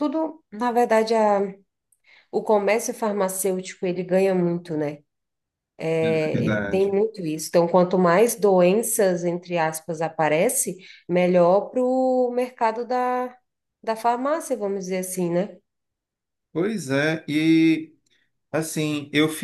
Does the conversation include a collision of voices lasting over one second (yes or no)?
no